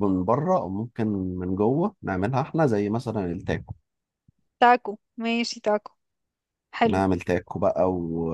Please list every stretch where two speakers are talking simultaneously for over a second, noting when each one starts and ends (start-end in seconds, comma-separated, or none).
none